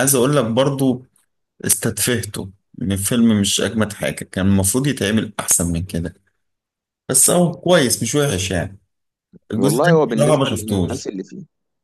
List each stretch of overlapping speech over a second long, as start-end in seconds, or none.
9.6-11.1